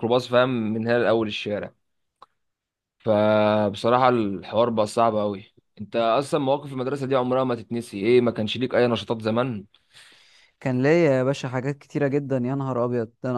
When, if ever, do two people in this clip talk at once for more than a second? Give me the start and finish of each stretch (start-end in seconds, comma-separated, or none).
none